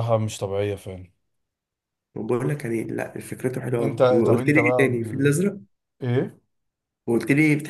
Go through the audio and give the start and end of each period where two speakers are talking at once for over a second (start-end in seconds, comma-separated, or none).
3.8-5.4